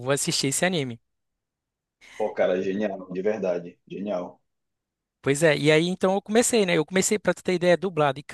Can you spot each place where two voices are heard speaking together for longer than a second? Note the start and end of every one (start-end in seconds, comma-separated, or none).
none